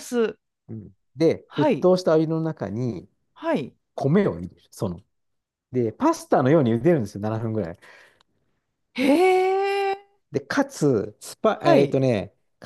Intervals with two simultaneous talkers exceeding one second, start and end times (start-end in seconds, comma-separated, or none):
none